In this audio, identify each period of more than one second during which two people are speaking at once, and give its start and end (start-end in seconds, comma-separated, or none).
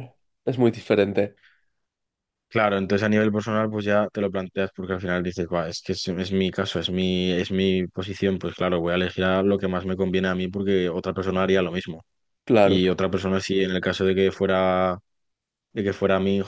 none